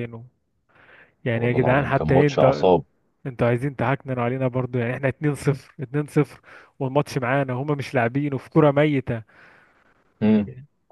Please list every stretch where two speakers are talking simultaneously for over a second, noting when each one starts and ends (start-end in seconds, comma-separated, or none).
1.3-2.7